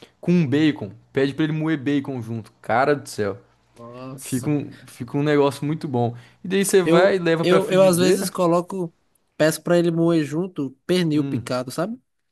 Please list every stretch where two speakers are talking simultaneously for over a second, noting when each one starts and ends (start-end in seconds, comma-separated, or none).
6.8-8.3